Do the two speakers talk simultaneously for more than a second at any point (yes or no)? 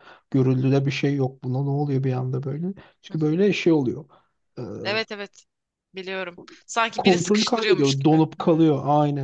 yes